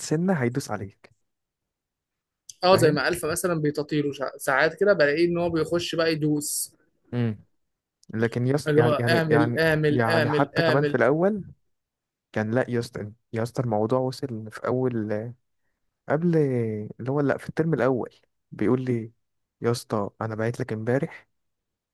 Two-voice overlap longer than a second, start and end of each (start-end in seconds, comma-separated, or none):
8.7-11.0